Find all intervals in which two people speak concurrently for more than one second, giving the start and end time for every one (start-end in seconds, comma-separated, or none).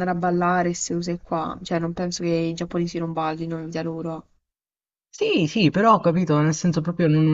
none